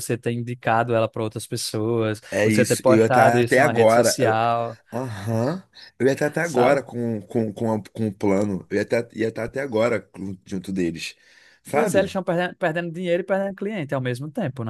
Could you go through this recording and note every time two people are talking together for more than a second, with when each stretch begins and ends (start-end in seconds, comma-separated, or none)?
2.3-4.4